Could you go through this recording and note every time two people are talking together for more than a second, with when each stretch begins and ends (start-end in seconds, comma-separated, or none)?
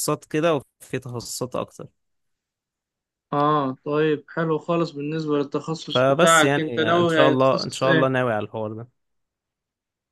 5.9-8.1